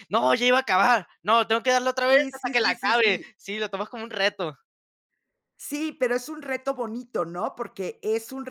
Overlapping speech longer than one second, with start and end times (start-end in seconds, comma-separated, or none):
2.1-3.3